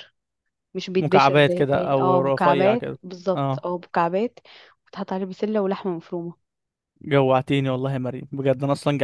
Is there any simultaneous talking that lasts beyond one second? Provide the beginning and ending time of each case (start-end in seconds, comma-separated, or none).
1.0-3.7